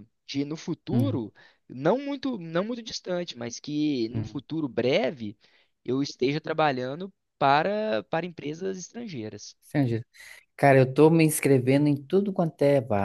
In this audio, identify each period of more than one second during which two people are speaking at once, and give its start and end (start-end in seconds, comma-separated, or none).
none